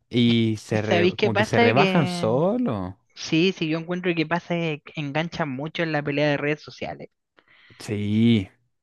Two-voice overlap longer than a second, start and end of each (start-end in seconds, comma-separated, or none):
0.7-2.3